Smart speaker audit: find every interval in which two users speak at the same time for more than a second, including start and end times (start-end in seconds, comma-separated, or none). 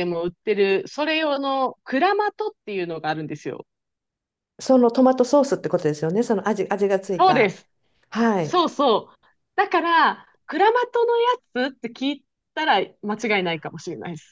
none